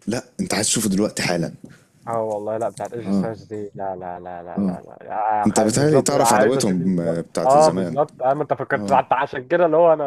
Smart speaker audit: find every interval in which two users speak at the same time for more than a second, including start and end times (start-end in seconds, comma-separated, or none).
5.5-8.0